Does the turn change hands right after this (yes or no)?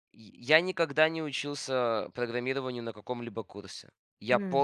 no